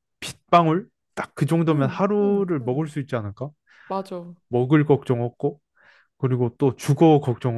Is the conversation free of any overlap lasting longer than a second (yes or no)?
no